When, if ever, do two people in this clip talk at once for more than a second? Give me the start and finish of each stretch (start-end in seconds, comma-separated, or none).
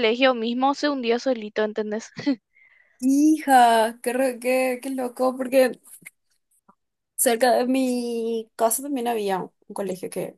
none